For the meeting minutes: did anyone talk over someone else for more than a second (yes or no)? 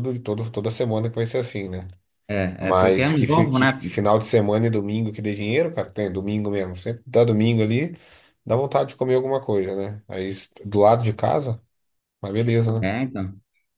yes